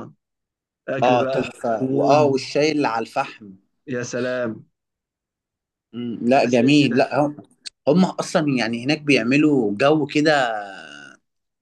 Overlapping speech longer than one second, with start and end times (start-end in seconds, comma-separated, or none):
1.1-2.4